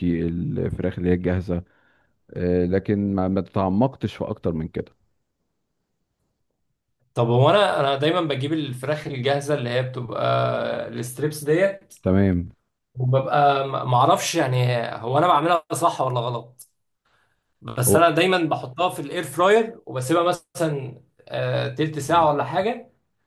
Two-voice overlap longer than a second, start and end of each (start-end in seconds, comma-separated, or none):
none